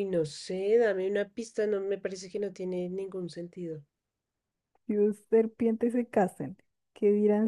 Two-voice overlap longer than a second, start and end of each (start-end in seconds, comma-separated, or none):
none